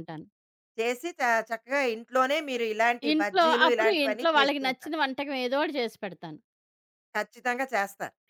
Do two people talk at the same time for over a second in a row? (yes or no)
yes